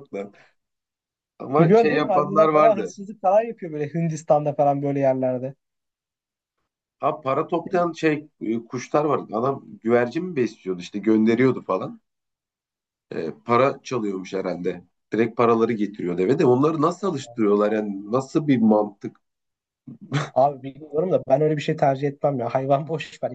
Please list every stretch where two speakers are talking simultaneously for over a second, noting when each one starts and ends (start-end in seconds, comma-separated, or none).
1.6-2.9